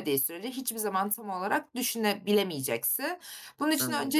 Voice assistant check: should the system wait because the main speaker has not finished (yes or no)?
yes